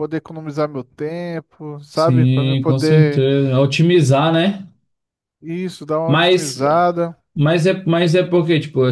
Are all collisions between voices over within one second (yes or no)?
no